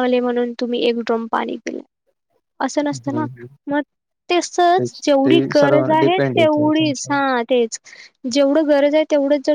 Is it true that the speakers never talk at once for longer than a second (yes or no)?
no